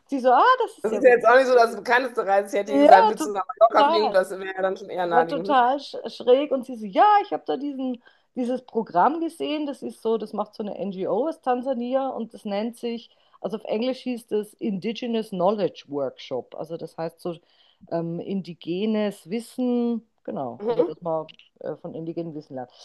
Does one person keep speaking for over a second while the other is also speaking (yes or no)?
yes